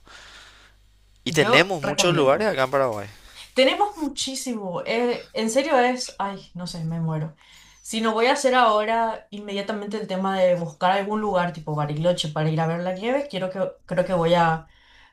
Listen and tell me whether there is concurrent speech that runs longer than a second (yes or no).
yes